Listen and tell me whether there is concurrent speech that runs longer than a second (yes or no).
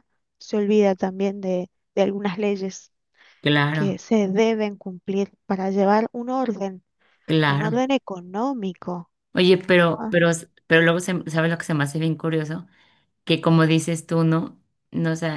no